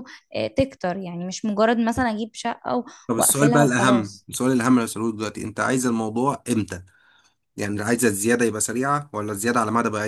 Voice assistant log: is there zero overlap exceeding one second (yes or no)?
no